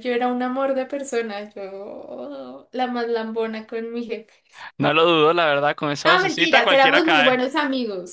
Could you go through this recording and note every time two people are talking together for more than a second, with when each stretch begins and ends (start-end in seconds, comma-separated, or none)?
6.0-7.4